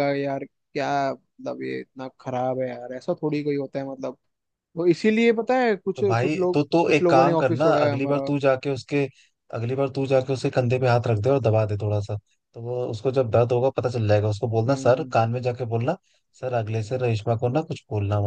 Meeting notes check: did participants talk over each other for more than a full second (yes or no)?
yes